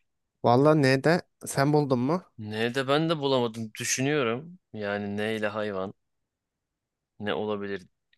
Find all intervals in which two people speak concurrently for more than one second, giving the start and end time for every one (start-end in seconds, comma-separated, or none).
none